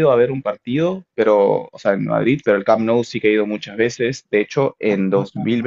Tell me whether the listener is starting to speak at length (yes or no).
no